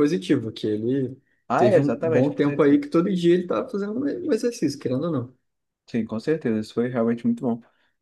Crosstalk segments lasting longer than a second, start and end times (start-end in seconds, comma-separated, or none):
1.6-2.8